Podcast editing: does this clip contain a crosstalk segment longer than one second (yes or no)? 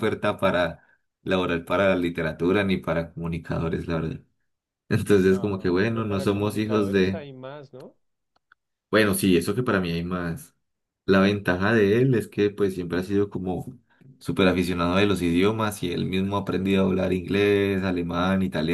yes